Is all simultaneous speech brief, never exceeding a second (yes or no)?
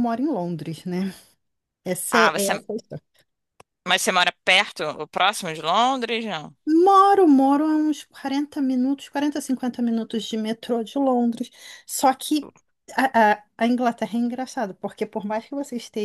yes